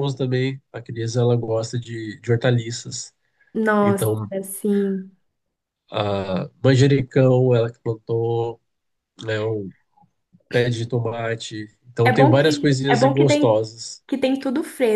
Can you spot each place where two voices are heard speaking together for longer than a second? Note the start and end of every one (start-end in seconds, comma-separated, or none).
12.0-13.6